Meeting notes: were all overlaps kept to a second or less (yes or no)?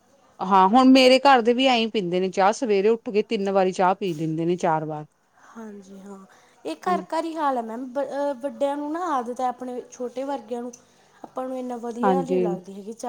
yes